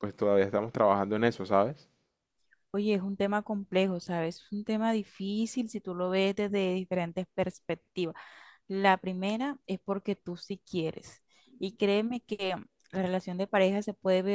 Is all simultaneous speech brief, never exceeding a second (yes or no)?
yes